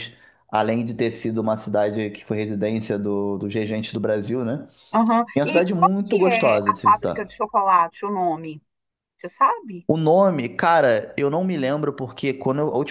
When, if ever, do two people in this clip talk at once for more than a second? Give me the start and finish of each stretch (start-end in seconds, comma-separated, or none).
5.3-7.3